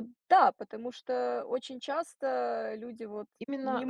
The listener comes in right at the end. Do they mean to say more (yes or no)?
yes